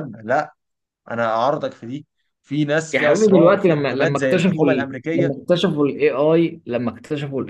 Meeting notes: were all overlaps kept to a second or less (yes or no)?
no